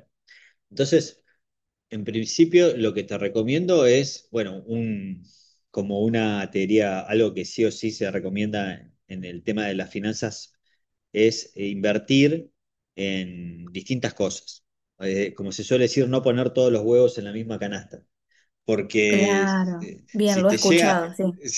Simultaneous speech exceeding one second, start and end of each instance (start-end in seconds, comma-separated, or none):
19.1-21.1